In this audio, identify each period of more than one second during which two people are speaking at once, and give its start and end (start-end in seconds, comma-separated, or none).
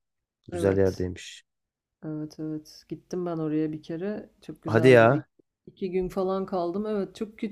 none